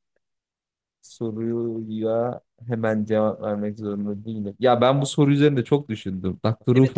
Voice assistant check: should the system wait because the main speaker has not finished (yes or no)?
no